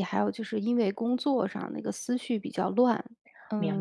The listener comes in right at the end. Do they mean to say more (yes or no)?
no